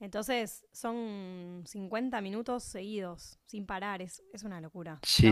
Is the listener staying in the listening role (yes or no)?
no